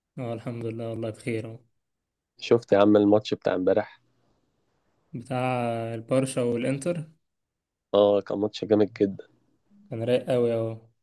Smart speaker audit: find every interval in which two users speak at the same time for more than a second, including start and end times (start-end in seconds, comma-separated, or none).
none